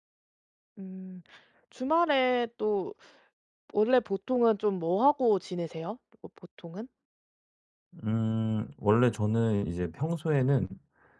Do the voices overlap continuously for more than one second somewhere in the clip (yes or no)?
no